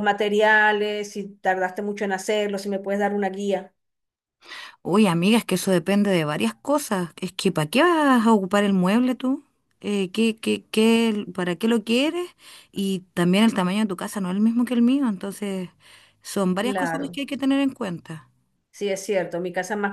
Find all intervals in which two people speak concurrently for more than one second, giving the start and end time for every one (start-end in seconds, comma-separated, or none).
none